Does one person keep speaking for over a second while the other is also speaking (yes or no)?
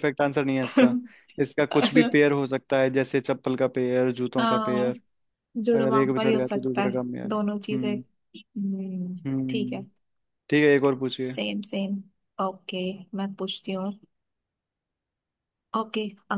yes